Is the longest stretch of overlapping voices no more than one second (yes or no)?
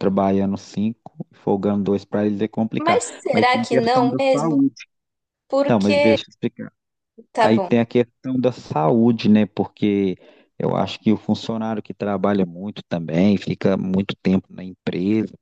no